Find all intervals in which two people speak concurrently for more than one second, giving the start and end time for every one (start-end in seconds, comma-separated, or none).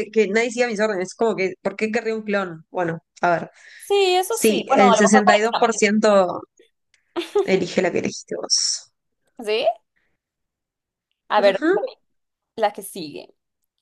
4.3-5.8